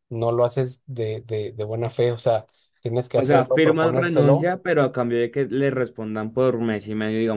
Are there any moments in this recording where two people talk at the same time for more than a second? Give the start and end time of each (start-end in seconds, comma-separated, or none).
3.1-4.5